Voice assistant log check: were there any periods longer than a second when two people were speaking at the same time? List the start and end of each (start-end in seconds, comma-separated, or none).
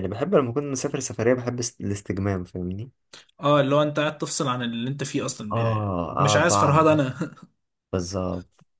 5.5-6.8